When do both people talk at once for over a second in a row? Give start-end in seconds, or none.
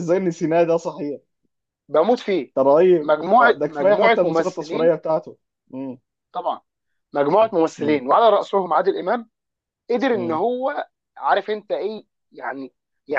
3.0-4.9